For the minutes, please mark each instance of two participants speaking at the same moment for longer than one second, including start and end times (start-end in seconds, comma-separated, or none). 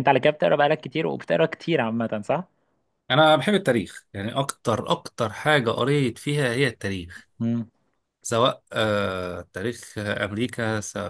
none